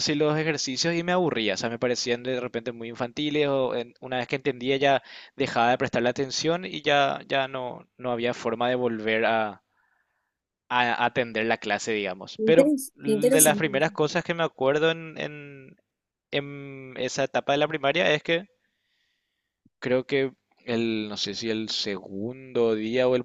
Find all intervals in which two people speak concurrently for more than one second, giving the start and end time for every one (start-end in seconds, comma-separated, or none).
12.4-13.9